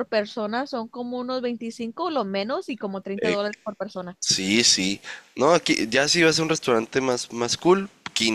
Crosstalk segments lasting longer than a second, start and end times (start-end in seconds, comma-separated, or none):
none